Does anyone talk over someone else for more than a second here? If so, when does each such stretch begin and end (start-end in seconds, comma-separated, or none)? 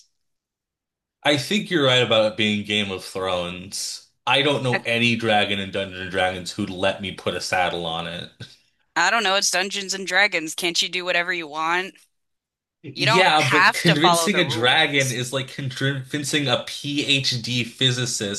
12.9-15.2